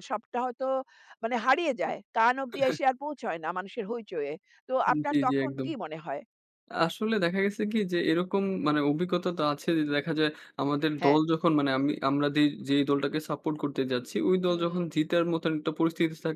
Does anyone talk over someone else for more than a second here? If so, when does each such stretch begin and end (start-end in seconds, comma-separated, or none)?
none